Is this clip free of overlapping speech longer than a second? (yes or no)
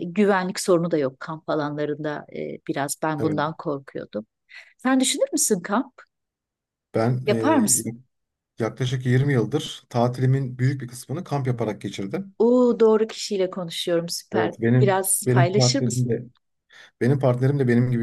no